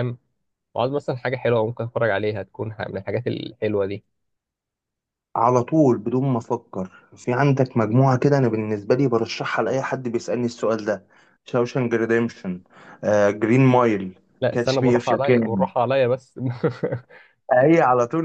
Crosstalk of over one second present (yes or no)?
yes